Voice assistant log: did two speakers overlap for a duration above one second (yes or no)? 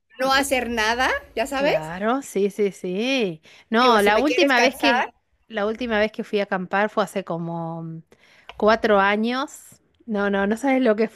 yes